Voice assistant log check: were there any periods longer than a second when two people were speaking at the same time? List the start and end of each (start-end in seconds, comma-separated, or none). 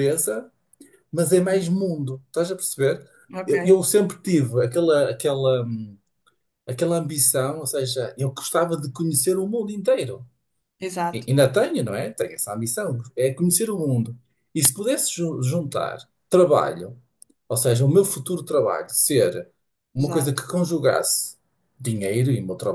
none